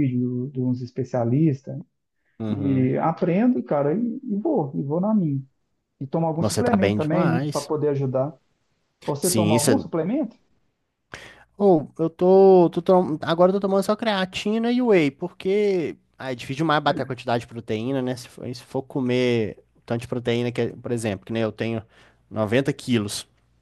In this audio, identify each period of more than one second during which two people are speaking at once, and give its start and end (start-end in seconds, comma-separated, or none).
6.4-7.7